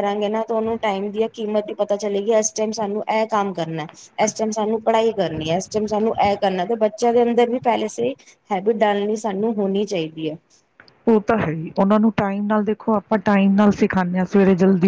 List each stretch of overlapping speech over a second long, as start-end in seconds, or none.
none